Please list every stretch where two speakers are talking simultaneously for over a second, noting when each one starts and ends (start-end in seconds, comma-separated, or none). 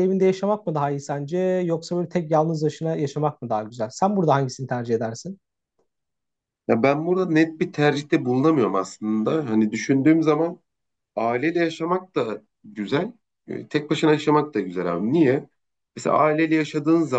none